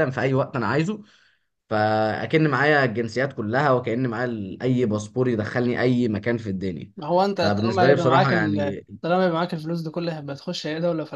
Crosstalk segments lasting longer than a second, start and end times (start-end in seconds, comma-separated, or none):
7.3-8.8